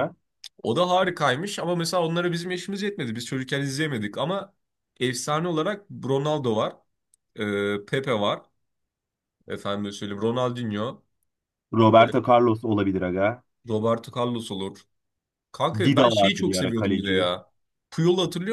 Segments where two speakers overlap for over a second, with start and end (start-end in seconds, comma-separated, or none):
15.8-17.3